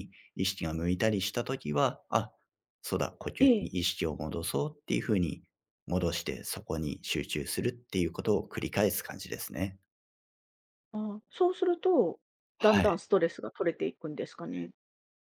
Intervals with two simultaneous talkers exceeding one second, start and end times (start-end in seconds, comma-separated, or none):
none